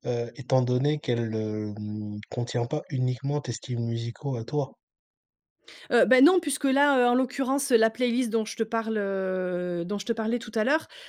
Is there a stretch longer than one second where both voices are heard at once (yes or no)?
no